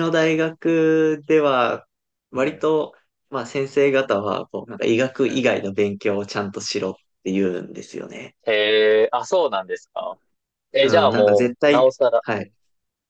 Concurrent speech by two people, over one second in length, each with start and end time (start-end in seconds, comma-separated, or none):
10.8-12.5